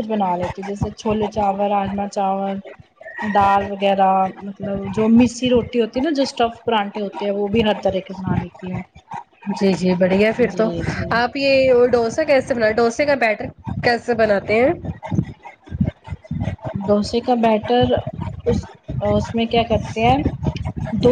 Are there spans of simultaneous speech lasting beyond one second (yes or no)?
no